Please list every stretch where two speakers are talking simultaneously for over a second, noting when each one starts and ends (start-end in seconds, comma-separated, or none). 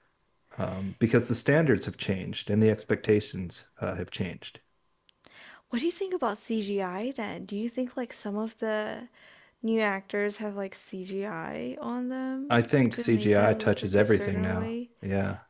12.5-14.9